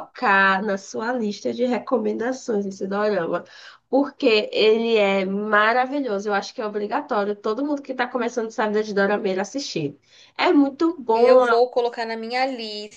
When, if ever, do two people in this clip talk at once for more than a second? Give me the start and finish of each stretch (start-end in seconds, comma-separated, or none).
none